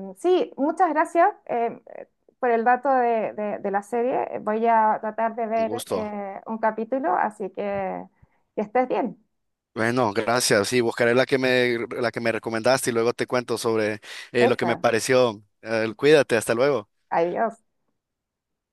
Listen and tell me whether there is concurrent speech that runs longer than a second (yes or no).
no